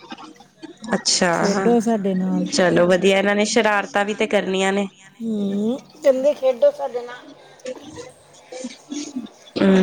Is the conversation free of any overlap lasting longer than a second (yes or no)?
yes